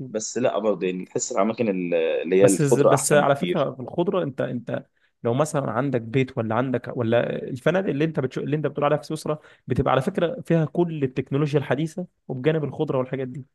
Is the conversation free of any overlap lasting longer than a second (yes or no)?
no